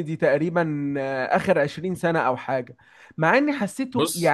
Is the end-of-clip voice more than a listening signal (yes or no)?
no